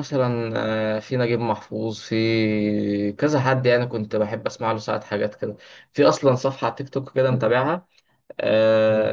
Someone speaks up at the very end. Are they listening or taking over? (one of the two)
listening